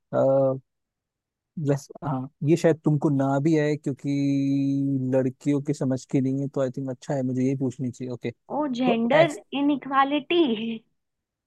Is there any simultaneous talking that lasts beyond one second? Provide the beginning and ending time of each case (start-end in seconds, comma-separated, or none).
none